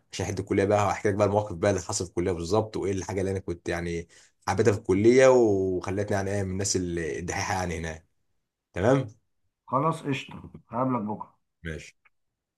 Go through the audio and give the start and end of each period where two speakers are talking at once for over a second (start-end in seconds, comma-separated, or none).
none